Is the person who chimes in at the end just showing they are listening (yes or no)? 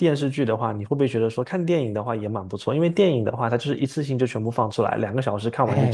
no